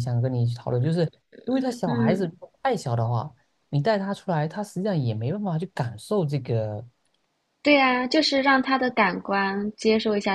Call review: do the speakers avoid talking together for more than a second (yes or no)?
yes